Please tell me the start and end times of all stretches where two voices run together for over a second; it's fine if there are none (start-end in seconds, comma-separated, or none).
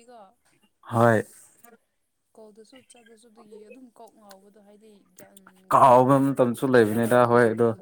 5.7-7.1